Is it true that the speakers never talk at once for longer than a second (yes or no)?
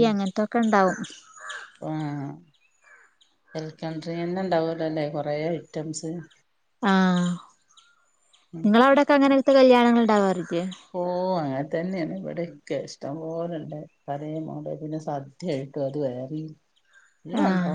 yes